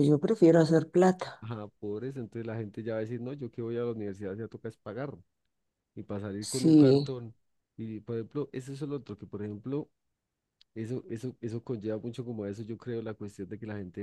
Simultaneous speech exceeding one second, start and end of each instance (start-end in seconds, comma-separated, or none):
none